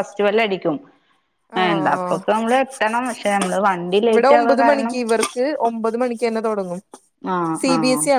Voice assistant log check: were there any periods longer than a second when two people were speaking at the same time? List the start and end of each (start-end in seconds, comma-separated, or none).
none